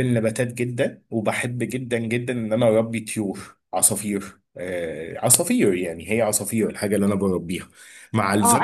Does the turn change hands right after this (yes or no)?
yes